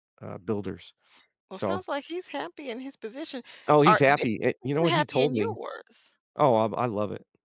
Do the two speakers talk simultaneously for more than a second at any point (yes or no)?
yes